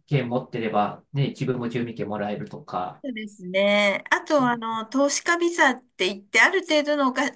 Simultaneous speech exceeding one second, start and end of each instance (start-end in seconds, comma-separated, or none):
none